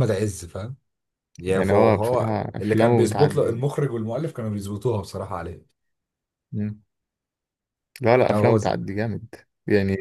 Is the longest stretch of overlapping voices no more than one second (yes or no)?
no